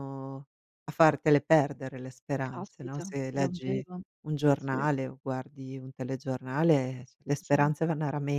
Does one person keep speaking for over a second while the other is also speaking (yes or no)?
yes